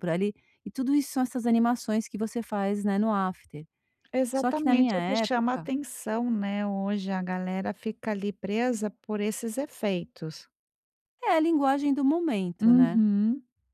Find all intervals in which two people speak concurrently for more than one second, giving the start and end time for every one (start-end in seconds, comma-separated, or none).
4.3-5.7